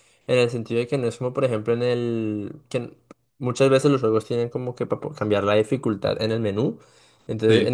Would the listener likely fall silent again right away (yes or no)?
yes